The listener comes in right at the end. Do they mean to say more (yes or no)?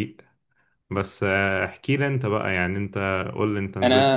yes